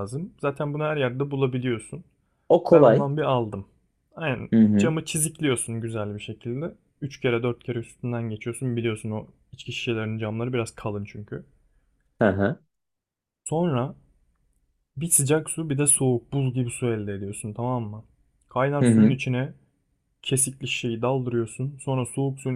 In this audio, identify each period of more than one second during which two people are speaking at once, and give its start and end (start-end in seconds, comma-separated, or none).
none